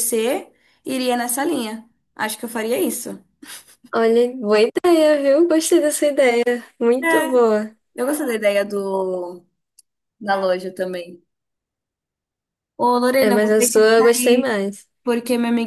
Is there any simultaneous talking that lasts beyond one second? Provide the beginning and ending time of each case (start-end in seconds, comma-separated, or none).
13.2-14.5